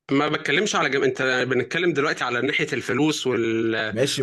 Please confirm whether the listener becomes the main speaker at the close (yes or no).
yes